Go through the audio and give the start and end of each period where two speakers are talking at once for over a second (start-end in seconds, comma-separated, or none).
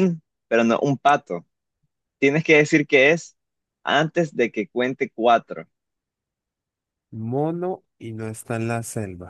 none